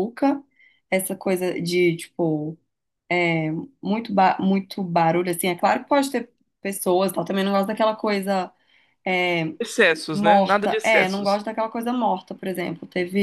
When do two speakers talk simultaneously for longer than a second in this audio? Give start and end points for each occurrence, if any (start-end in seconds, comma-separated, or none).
10.1-11.4